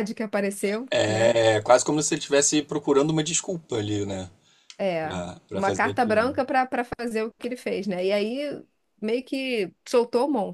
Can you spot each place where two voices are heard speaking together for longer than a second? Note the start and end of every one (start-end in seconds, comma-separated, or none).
5.0-6.4